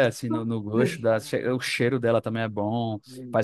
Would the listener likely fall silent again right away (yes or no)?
no